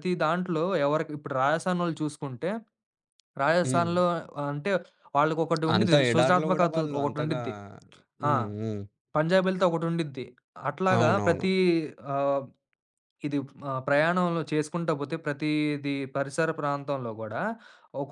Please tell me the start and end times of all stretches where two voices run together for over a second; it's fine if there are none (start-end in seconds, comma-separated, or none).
5.8-7.4